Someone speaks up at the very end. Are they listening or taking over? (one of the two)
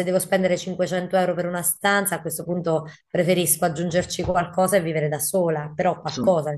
listening